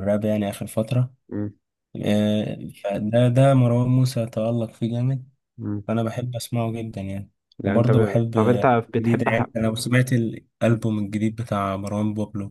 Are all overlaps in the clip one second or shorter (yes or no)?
no